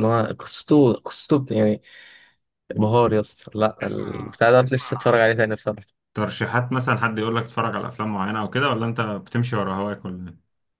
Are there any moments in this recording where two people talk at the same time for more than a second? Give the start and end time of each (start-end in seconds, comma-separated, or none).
3.8-5.2